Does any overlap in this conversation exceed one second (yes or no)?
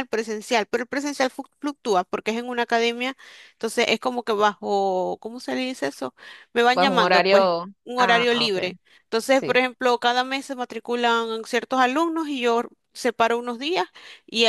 yes